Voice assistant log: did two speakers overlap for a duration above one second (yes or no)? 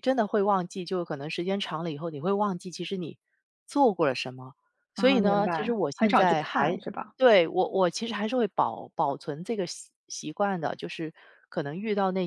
yes